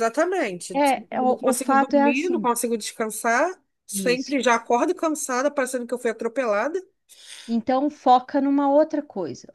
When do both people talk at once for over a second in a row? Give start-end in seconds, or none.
0.7-2.5